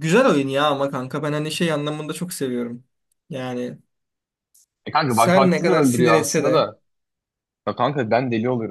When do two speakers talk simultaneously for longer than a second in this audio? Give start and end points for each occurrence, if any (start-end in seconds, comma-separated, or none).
5.1-6.7